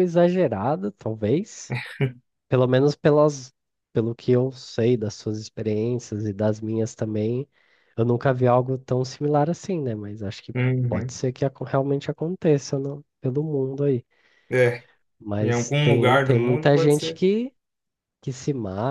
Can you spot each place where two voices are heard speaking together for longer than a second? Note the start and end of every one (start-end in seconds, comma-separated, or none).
15.4-17.2